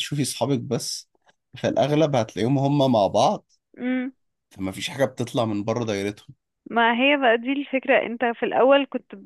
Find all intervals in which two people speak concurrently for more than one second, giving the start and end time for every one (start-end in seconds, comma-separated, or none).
none